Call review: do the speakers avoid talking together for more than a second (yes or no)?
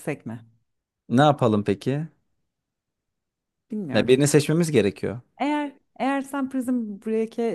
yes